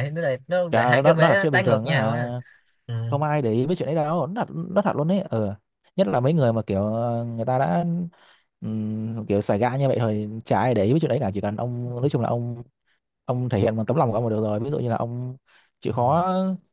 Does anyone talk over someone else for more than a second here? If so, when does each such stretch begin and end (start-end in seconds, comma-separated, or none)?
0.7-2.3